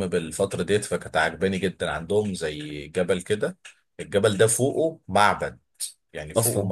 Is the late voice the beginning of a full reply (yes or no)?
no